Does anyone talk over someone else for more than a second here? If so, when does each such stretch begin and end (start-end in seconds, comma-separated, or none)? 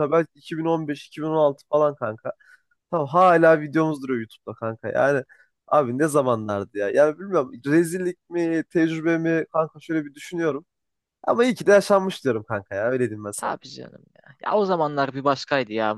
none